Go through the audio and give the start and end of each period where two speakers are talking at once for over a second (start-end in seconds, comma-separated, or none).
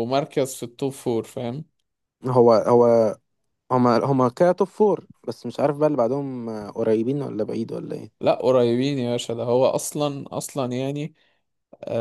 none